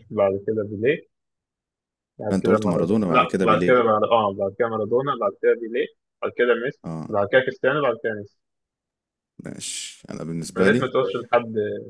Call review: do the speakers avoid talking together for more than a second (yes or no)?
no